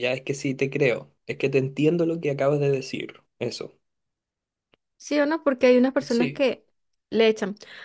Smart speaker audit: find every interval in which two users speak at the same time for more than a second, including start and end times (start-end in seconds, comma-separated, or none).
none